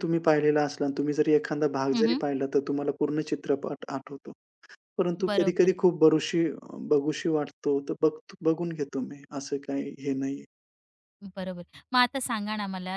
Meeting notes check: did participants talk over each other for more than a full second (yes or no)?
no